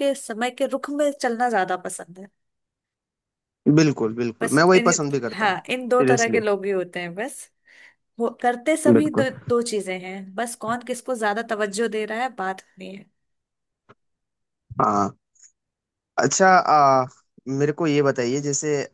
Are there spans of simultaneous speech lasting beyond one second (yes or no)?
yes